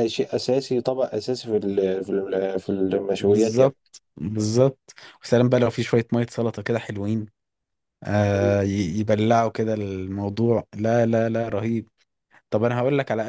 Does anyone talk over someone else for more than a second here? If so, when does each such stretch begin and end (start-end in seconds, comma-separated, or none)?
none